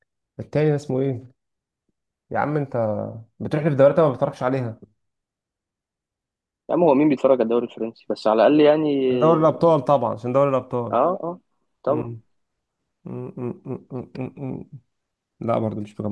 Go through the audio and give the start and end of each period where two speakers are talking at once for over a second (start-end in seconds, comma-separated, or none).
none